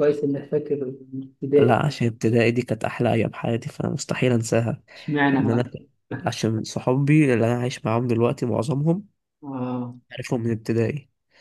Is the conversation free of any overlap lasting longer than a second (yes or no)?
yes